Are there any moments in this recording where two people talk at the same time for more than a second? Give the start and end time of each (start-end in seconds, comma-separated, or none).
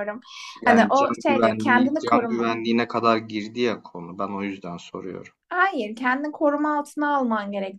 0.6-2.5